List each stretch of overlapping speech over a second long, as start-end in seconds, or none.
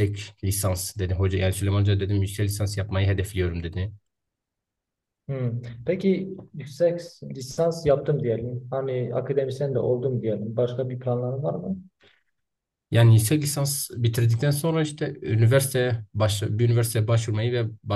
none